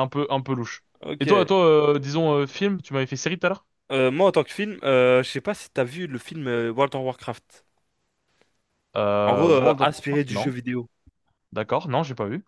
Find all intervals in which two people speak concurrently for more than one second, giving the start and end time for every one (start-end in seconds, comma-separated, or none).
9.3-10.5